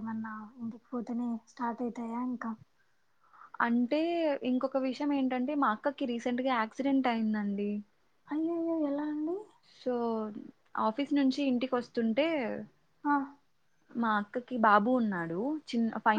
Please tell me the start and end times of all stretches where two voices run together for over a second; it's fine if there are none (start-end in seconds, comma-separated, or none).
none